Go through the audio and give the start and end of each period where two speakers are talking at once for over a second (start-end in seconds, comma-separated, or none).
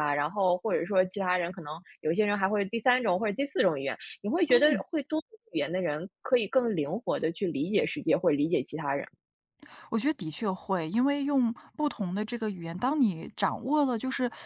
none